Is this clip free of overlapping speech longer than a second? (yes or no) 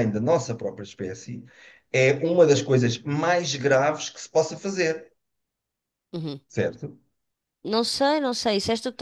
yes